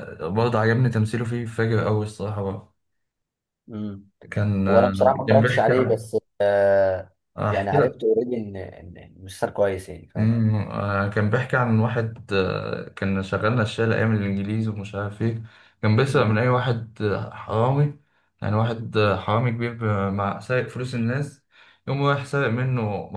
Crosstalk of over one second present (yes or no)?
yes